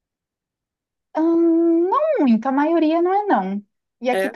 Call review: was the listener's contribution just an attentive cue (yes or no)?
yes